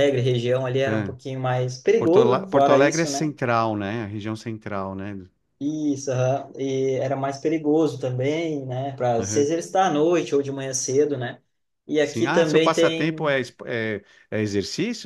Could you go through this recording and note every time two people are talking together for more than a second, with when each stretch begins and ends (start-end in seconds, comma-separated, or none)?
2.0-3.3, 12.0-13.4